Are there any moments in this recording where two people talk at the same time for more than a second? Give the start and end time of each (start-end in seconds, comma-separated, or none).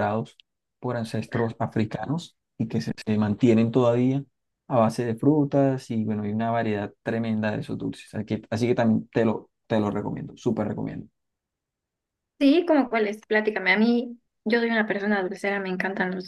none